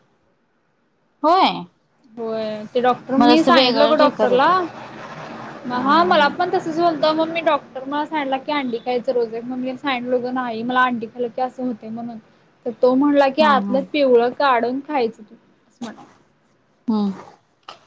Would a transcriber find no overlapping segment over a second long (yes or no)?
no